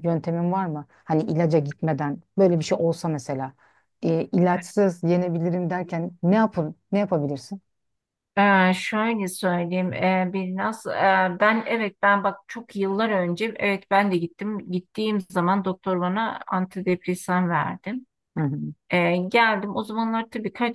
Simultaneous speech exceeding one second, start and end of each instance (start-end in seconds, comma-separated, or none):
none